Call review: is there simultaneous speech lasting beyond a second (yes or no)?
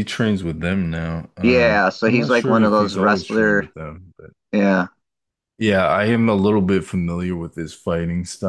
yes